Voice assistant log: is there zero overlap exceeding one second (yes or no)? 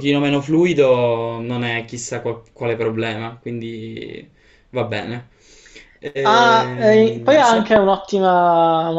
no